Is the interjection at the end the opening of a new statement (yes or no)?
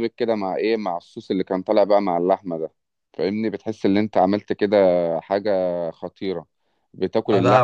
yes